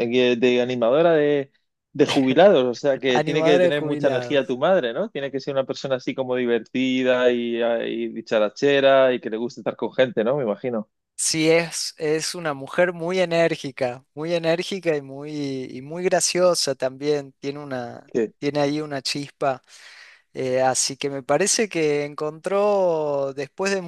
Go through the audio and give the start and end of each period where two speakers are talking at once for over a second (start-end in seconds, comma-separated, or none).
3.1-4.6